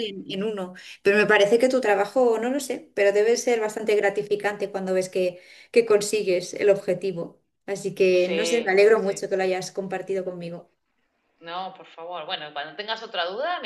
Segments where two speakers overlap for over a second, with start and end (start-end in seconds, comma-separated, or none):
8.1-9.3